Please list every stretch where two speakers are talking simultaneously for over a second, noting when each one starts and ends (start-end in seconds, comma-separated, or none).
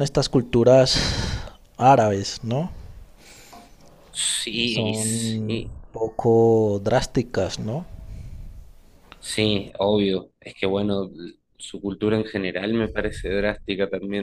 4.5-5.8